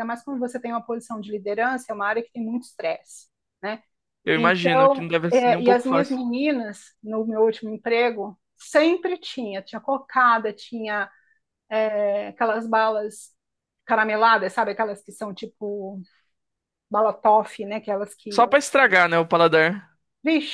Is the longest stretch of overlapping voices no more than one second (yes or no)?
no